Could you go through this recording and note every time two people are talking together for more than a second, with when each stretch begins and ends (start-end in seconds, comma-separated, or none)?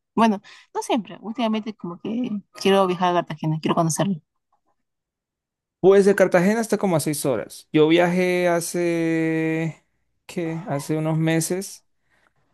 none